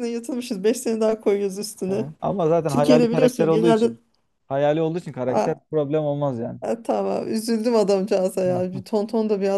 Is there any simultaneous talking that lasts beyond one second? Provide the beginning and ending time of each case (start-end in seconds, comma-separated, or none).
2.7-3.9